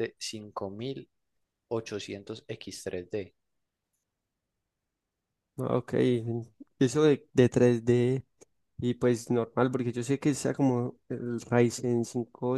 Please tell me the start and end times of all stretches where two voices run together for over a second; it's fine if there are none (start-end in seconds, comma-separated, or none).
none